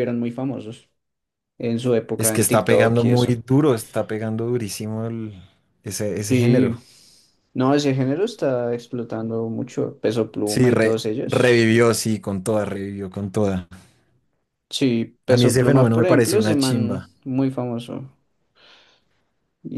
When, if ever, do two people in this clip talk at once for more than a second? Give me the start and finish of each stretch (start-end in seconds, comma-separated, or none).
2.2-3.4, 10.4-11.8, 15.3-17.1